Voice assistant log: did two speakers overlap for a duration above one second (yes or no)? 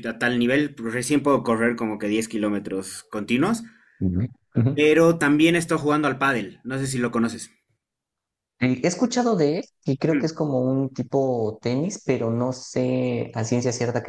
no